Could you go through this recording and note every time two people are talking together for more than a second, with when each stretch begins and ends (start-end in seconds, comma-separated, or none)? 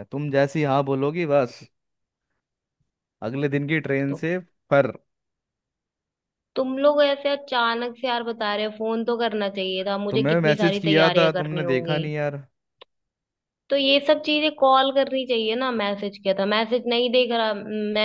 10.1-12.0